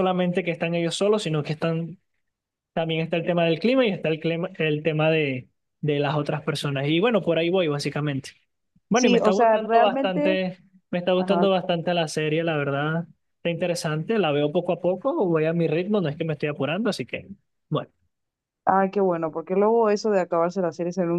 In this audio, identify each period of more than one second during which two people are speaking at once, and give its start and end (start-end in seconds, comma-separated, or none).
8.9-10.4